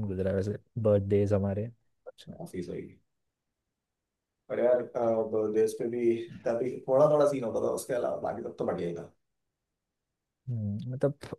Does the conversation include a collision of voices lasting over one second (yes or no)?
no